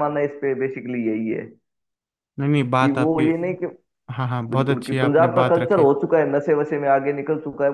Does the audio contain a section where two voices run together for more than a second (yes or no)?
yes